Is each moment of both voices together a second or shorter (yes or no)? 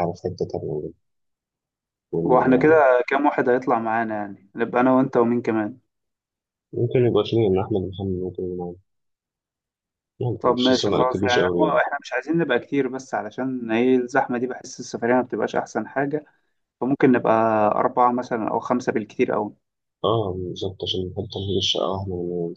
no